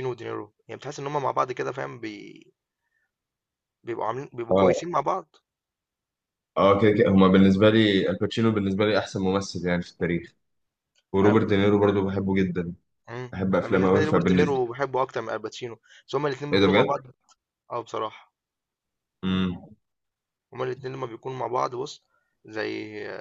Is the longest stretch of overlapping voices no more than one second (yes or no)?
no